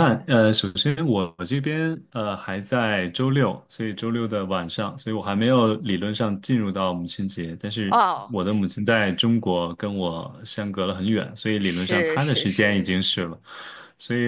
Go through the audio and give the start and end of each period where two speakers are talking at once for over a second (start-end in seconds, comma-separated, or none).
11.6-12.8